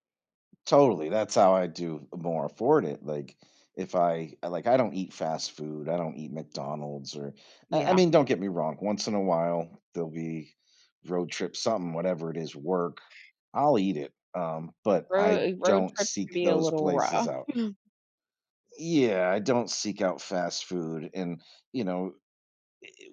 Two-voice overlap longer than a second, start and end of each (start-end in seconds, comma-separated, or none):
15.1-17.3